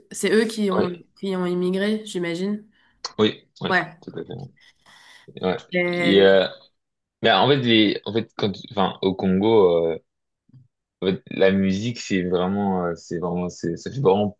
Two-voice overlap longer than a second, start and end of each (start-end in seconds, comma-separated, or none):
none